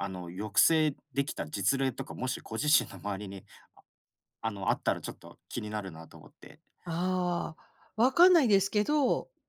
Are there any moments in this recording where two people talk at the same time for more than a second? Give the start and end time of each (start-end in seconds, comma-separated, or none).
none